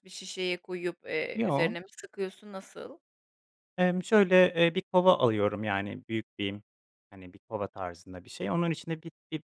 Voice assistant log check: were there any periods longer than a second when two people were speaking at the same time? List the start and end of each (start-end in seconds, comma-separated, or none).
none